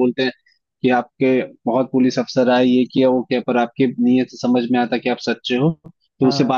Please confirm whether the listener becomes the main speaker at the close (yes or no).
no